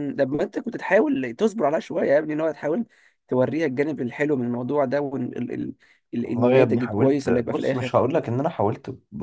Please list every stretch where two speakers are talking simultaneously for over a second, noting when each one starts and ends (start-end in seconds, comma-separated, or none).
6.2-8.0